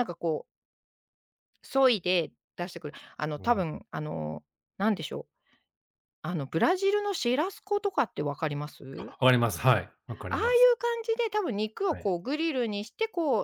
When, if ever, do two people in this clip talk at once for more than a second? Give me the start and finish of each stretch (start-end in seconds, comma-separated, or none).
none